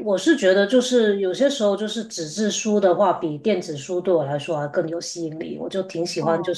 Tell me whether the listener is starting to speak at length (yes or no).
no